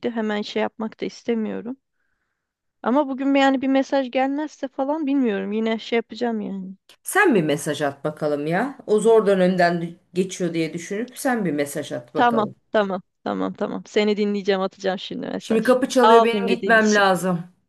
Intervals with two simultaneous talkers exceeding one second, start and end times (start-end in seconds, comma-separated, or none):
15.4-17.0